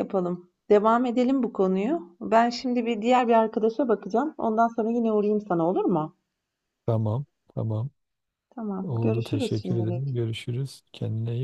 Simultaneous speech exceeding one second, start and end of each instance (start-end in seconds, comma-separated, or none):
8.8-10.2